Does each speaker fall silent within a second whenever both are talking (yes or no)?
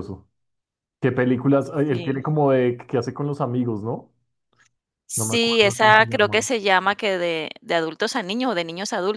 no